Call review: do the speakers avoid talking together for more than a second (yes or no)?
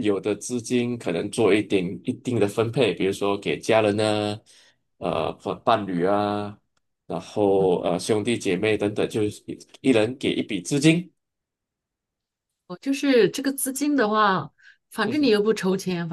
yes